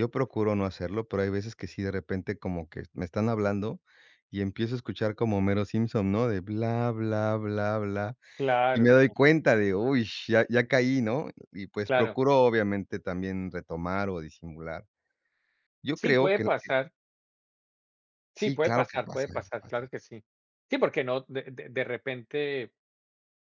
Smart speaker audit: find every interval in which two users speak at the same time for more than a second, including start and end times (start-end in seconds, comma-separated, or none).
18.3-19.8